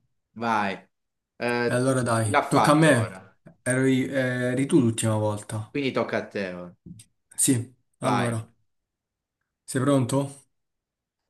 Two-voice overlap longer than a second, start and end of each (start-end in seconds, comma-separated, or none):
1.6-3.2